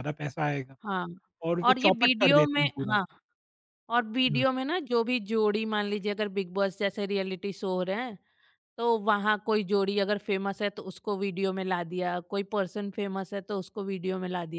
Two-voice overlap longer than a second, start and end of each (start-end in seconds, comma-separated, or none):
1.6-3.0